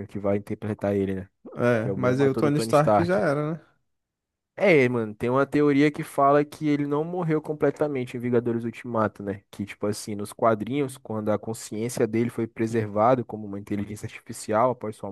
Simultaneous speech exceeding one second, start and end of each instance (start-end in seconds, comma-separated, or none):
1.8-3.2